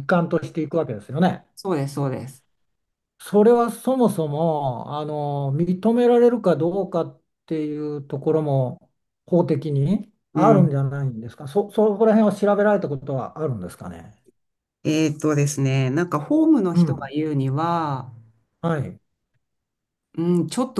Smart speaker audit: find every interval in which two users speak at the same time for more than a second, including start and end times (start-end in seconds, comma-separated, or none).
none